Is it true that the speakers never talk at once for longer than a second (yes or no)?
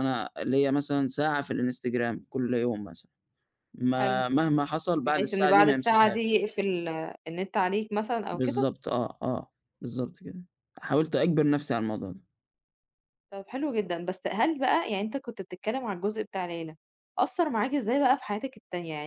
no